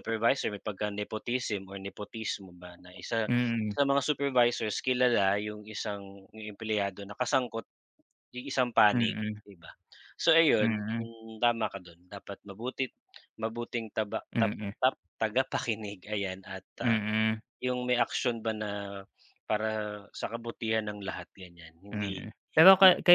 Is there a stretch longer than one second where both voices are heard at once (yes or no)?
no